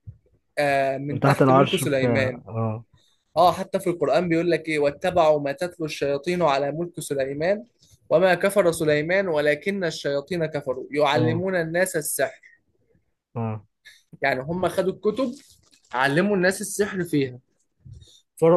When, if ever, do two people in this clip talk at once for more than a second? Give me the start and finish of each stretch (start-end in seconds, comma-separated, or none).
1.1-2.4